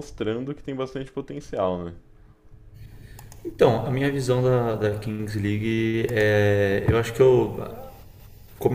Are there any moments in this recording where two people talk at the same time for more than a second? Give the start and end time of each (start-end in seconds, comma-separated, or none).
none